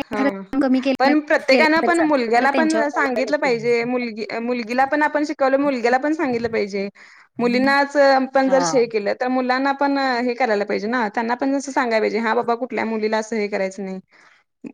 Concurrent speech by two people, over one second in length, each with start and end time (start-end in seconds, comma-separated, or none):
1.5-3.7